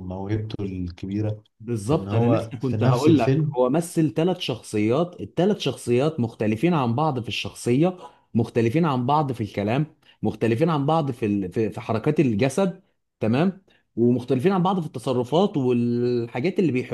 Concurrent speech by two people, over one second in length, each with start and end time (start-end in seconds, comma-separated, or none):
1.9-3.6